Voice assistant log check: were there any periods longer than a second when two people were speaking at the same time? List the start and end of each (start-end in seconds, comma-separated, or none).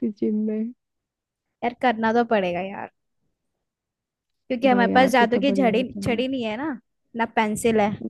4.7-6.2